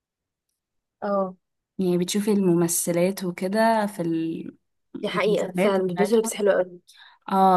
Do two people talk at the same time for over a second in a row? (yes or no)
yes